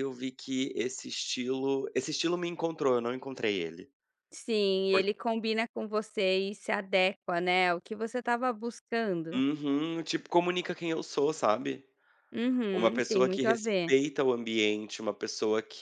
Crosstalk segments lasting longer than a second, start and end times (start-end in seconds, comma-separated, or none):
12.7-13.9